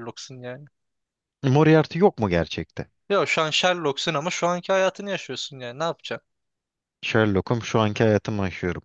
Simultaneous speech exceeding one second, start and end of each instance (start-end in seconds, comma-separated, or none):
none